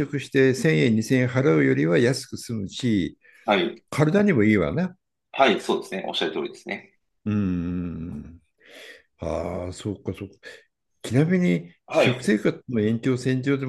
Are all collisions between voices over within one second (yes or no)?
yes